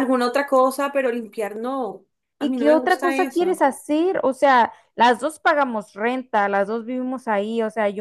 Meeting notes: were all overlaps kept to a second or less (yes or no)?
no